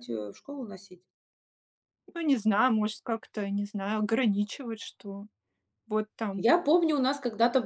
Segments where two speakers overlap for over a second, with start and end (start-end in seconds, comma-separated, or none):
none